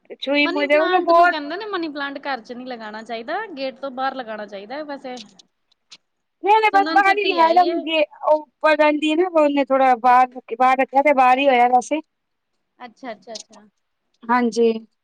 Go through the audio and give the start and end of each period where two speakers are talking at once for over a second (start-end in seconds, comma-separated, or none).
none